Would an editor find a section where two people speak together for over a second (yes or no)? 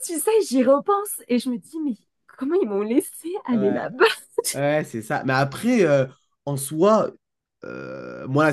no